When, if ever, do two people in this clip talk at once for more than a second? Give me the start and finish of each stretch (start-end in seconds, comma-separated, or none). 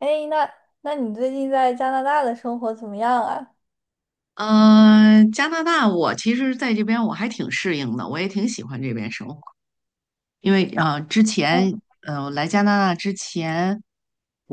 none